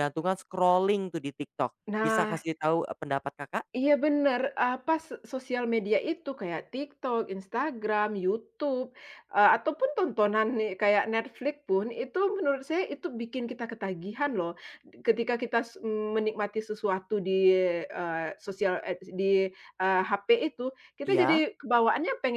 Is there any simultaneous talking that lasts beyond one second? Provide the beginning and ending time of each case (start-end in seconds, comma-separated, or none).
none